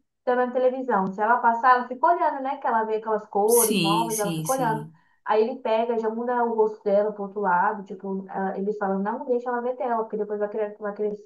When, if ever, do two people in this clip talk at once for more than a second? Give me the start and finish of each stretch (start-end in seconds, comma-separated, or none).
3.4-4.9